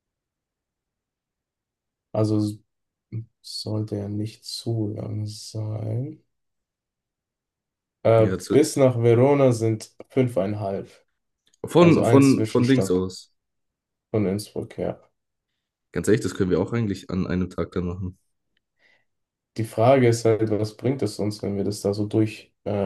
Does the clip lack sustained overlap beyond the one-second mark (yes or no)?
no